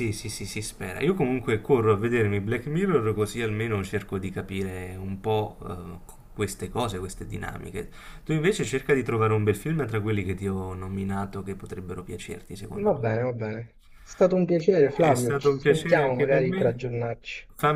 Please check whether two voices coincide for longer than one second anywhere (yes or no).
yes